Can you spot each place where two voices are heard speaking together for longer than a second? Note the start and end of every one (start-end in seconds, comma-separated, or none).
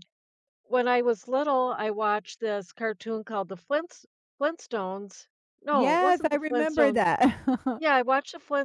5.7-7.0